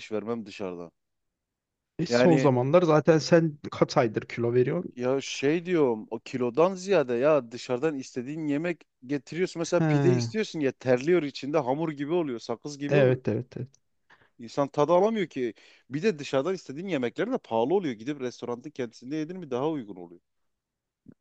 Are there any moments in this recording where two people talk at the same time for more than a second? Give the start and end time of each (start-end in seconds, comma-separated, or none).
none